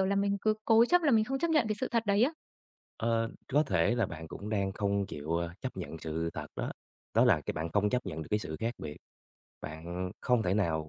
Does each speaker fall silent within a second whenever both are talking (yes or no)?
yes